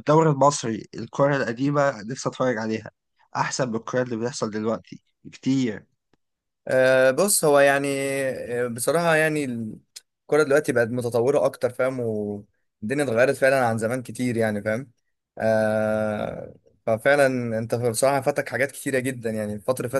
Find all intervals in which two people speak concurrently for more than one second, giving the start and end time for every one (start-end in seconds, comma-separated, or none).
none